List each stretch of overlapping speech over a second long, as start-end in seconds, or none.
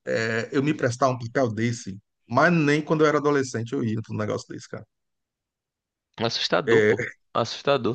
none